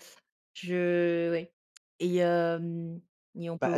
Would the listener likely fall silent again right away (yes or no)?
no